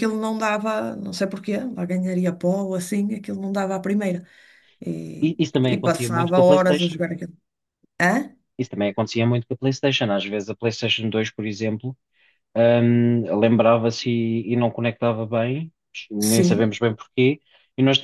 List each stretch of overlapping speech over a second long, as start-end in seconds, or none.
5.2-7.0